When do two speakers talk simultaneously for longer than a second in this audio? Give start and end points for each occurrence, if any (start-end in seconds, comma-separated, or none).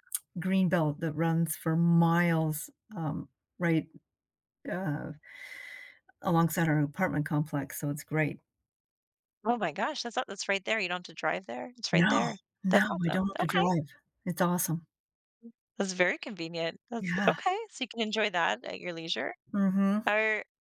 11.9-13.6